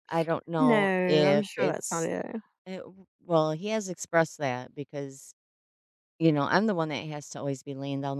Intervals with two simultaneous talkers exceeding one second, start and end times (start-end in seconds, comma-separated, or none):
0.6-2.1